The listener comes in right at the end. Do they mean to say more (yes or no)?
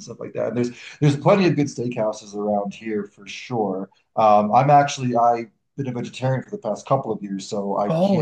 no